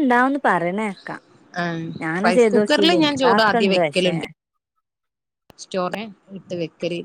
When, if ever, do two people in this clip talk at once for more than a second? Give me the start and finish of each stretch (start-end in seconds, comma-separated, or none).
2.2-4.1